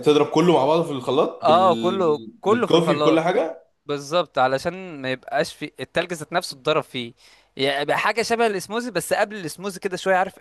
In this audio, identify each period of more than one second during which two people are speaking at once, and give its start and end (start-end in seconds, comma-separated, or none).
1.4-3.4